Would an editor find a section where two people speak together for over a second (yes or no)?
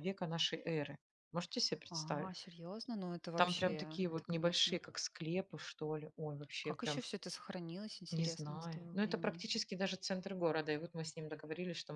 yes